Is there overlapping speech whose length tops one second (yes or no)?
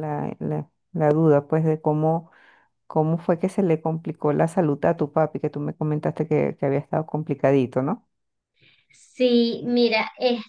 no